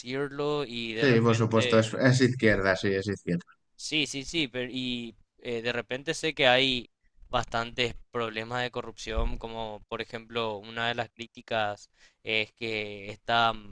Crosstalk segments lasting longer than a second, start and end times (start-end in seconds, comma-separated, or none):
0.9-2.2